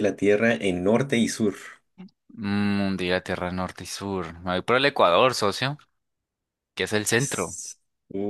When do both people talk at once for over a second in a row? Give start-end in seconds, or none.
none